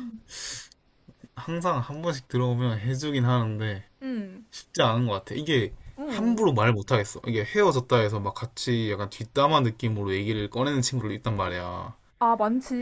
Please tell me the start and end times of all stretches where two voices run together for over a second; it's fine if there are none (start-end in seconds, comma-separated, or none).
none